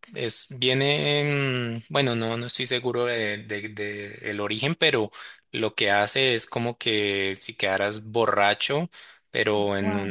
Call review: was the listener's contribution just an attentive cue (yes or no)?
yes